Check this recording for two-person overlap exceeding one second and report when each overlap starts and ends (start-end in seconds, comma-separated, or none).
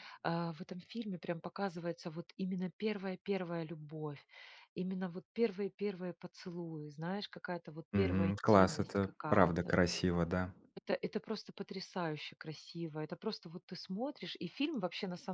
7.9-9.7